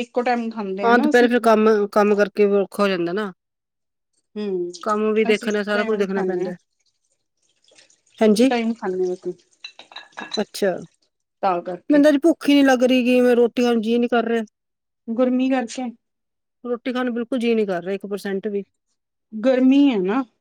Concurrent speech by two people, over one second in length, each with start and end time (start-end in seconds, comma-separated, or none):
5.3-6.5